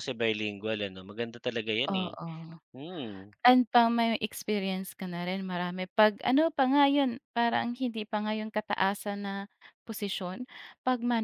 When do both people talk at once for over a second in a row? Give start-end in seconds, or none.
none